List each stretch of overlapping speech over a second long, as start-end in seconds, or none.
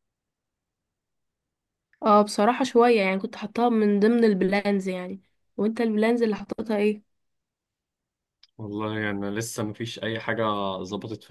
none